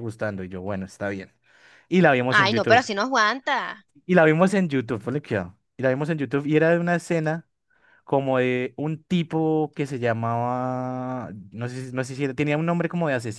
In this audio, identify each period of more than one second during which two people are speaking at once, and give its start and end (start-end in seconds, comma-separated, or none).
none